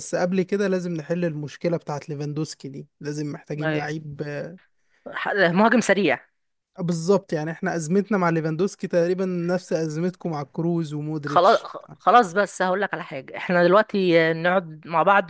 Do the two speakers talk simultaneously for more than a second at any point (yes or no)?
no